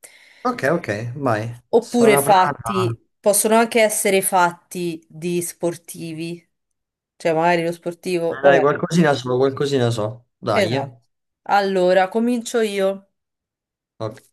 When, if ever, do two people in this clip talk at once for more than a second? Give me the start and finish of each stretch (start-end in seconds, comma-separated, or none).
1.7-3.0